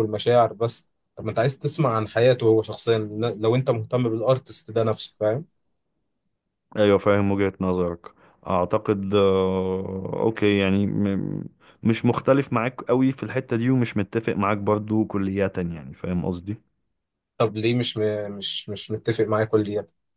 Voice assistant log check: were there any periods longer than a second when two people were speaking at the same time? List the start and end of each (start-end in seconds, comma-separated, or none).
none